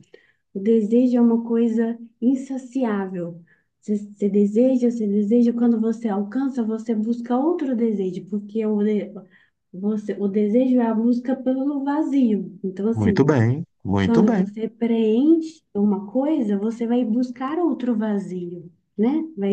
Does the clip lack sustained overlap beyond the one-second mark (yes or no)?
yes